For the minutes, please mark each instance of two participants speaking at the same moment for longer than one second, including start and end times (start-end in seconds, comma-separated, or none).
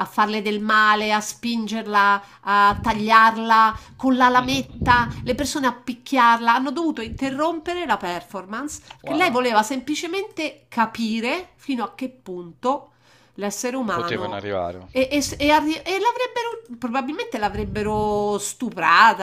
none